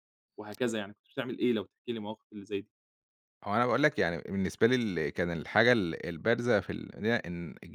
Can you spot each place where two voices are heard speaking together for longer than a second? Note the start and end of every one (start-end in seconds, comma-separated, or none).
none